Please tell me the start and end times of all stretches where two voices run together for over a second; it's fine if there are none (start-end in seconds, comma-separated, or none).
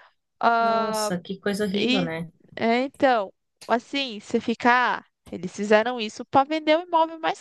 none